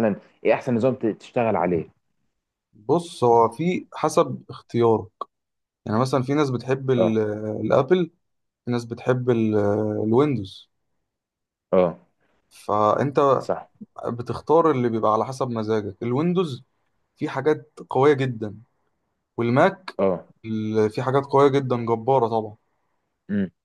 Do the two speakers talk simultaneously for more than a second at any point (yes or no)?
no